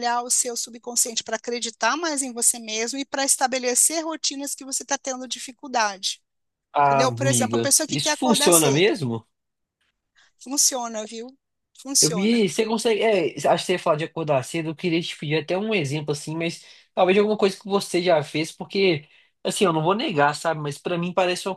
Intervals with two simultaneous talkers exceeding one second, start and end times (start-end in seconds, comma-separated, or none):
6.8-9.0